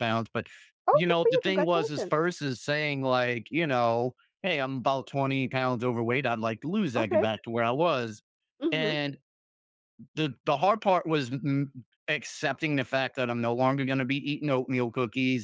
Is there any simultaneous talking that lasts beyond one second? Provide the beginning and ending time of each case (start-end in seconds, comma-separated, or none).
0.9-2.1